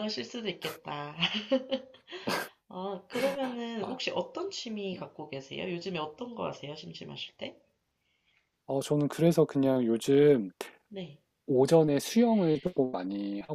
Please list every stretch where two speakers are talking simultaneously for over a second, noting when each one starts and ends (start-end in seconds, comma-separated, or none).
none